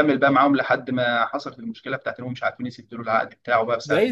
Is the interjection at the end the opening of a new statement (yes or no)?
yes